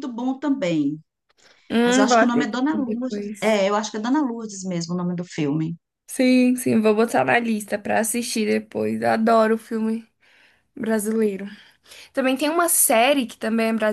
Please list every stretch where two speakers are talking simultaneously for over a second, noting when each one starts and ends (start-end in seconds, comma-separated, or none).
1.8-3.6